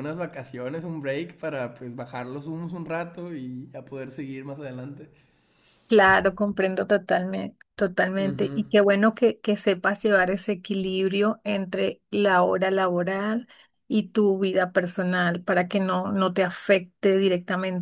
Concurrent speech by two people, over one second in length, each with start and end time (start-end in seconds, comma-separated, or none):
none